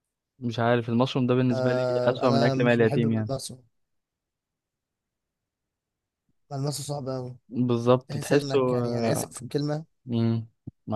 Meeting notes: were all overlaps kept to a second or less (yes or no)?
no